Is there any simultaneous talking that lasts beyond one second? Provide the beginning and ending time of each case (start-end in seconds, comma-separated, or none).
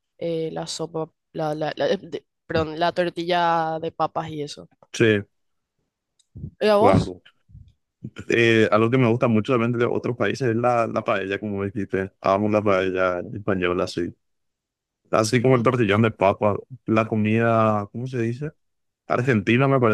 none